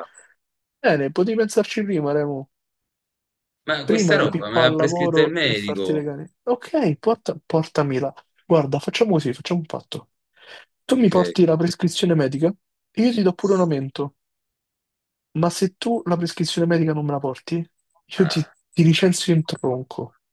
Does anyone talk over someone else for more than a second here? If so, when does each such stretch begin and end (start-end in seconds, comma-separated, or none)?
3.8-6.0